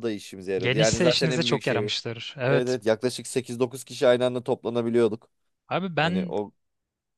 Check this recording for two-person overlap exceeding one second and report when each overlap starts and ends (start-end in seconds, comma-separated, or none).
0.6-1.8